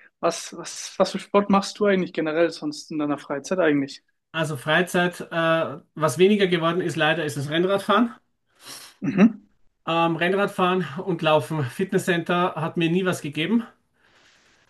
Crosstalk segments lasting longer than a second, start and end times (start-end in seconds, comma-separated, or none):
none